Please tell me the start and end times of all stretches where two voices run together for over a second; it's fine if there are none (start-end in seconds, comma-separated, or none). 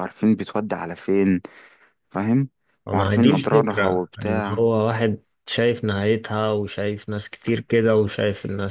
2.9-4.7